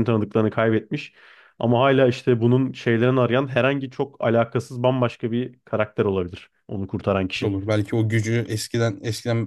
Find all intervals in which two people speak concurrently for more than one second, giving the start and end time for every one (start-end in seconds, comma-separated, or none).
none